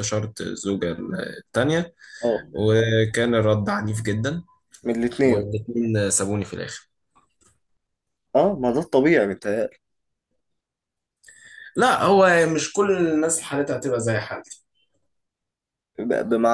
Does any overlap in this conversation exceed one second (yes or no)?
no